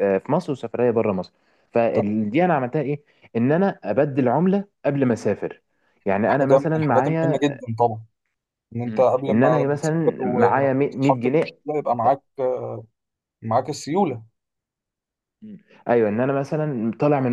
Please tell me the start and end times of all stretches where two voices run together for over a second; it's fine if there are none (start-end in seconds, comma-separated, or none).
6.3-7.5, 8.8-11.6